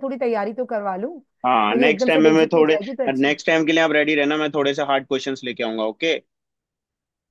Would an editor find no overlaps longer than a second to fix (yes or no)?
no